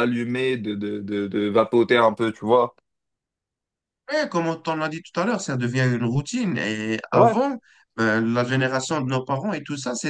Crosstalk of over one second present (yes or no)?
no